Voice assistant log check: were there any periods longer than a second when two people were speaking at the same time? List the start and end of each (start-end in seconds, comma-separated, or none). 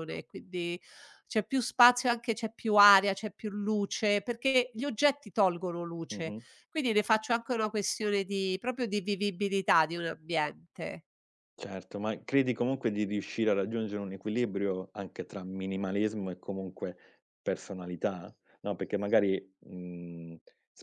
none